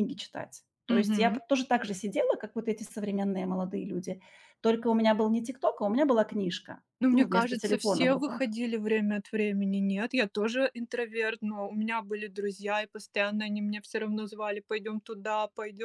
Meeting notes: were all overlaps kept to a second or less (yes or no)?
no